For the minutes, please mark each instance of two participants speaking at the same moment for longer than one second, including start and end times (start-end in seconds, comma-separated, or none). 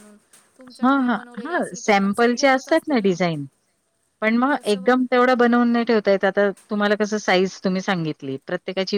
0.8-3.0